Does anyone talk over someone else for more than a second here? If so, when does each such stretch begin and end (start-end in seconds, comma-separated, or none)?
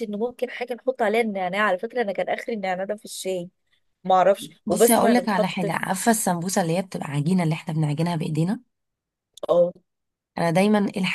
4.7-5.9